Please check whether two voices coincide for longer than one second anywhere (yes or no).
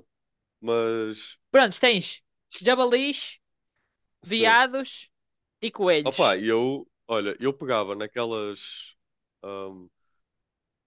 no